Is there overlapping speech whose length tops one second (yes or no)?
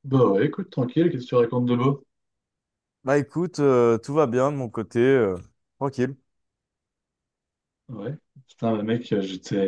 no